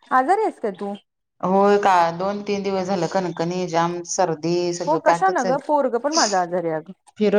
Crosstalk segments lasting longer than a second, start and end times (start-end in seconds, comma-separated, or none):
4.9-6.2